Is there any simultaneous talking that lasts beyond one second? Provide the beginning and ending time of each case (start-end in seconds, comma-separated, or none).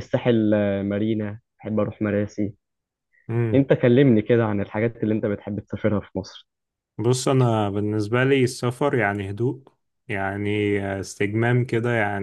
none